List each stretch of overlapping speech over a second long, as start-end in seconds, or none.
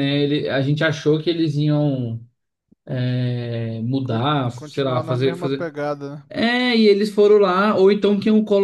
4.1-5.7